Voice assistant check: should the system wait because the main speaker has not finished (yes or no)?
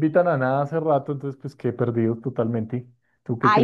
no